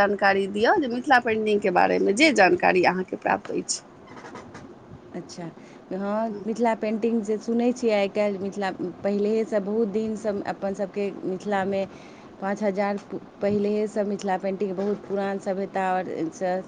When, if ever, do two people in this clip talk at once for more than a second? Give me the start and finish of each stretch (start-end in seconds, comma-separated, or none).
none